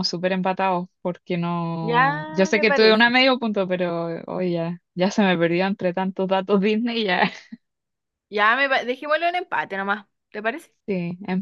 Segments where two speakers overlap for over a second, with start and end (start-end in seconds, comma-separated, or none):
1.8-3.1